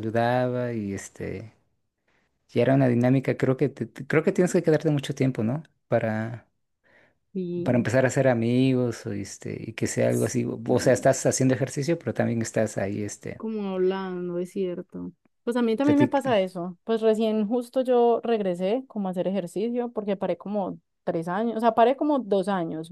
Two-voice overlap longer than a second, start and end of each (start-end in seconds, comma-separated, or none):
none